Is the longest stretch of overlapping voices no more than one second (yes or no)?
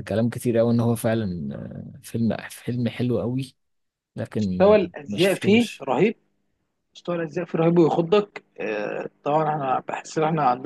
no